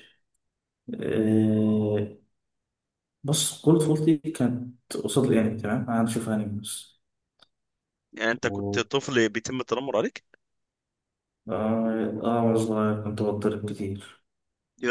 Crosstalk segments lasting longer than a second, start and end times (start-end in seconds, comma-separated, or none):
none